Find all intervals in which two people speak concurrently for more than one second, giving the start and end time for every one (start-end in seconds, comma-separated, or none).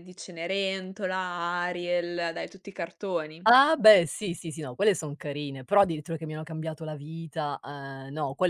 none